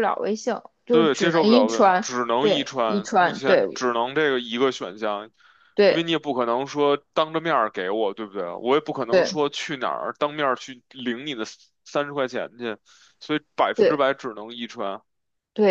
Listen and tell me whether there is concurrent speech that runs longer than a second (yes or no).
yes